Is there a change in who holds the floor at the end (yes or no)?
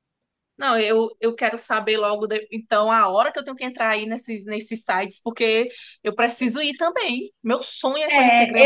yes